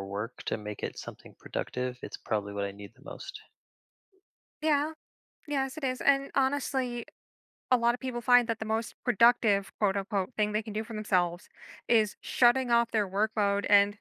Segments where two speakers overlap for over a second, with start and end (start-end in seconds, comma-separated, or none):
none